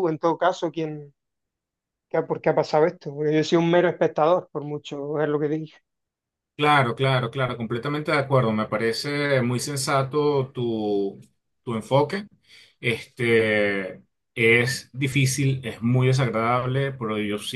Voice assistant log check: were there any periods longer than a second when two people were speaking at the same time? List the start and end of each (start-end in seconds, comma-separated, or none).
none